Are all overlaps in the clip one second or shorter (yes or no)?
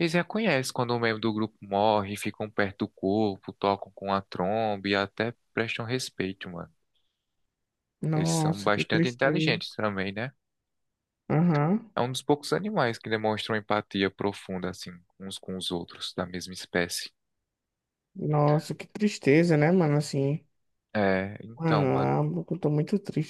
no